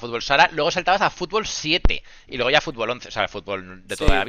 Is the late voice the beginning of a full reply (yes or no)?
no